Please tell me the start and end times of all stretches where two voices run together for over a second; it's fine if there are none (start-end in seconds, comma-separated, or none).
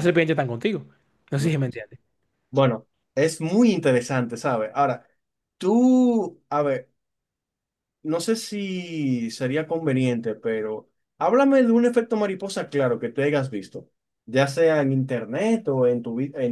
none